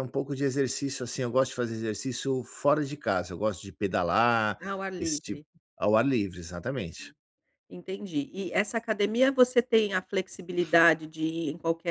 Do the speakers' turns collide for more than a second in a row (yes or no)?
no